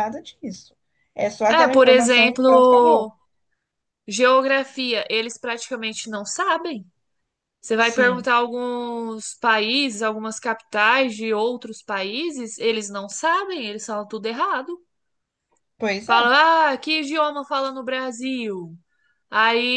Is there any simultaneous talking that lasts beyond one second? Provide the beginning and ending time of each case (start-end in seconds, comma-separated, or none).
1.5-3.1